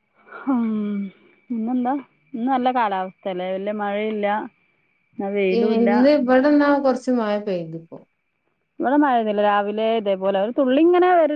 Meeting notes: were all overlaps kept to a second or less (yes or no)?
yes